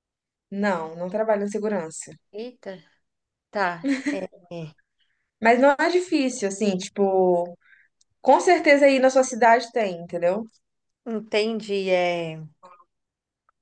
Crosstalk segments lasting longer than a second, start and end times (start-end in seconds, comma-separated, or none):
none